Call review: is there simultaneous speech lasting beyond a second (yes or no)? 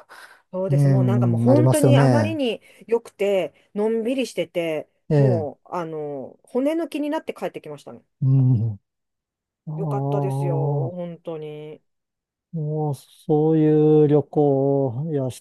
yes